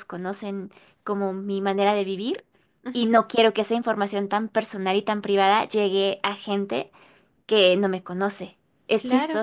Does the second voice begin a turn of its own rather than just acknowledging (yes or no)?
yes